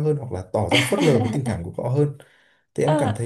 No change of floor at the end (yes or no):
yes